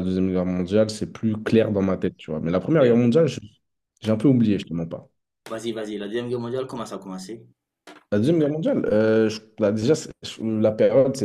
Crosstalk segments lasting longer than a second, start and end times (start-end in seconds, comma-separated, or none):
none